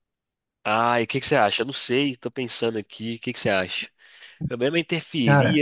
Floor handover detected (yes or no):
no